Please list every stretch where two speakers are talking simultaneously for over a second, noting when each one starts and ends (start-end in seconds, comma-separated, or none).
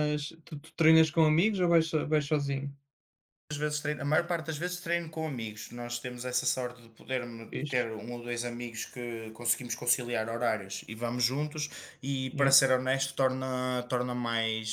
none